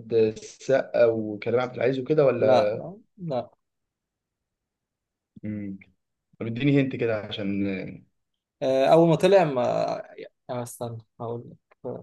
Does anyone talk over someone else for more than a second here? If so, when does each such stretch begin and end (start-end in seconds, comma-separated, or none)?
none